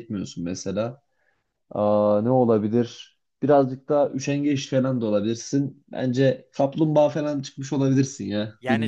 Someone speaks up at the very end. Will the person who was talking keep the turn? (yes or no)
no